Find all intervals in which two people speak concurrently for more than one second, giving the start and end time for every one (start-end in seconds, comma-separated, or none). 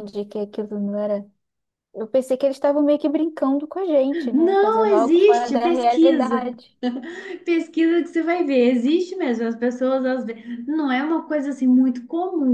4.3-6.5